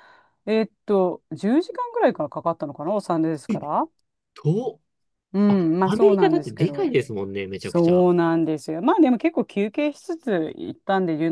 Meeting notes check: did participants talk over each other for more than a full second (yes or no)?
yes